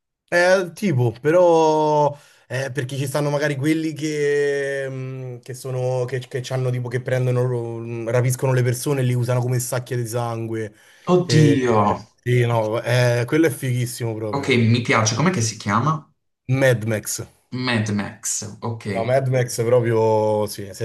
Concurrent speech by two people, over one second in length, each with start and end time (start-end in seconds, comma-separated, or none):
none